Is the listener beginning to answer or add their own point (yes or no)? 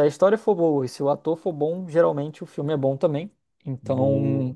no